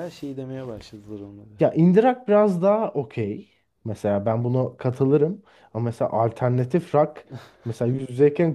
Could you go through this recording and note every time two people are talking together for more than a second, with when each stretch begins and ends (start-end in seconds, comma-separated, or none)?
none